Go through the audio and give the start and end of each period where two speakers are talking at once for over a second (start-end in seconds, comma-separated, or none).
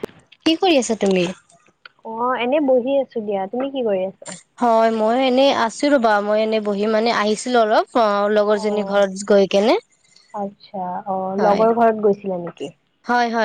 none